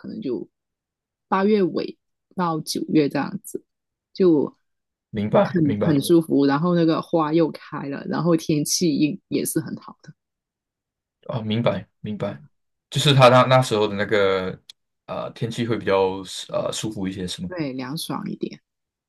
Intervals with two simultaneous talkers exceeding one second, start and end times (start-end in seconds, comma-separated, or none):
none